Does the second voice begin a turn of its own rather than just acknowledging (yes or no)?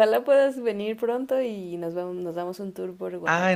yes